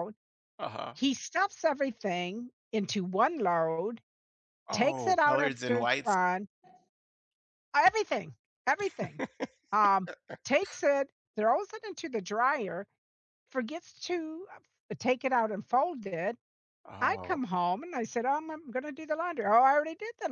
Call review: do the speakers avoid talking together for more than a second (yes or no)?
no